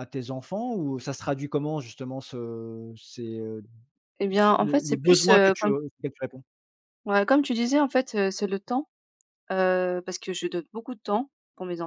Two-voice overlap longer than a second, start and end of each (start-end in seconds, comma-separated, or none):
4.3-5.7